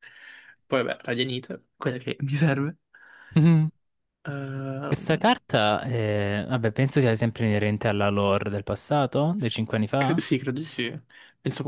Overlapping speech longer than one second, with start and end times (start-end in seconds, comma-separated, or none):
none